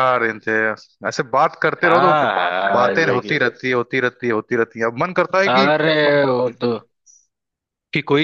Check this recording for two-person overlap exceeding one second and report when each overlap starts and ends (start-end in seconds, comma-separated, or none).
1.8-3.4